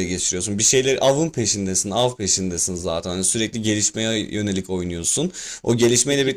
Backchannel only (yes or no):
no